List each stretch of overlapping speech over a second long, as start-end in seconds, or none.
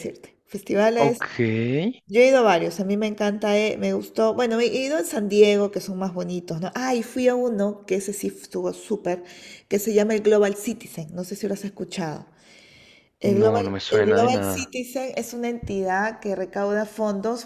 13.2-14.7